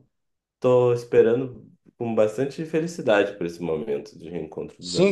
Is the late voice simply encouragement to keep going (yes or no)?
no